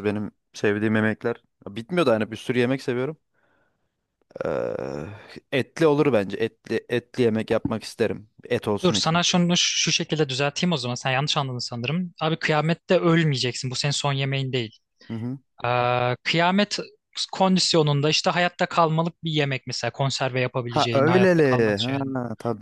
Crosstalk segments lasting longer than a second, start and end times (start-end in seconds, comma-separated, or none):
20.7-21.9